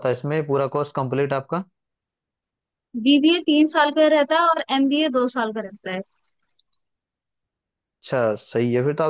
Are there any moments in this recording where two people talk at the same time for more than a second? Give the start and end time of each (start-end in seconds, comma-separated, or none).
none